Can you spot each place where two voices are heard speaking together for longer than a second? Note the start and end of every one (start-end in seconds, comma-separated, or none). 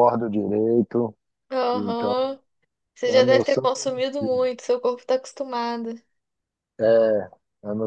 3.1-4.5